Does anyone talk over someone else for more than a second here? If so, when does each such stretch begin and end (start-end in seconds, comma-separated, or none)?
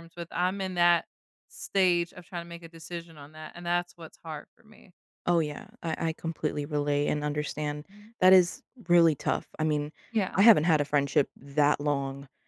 none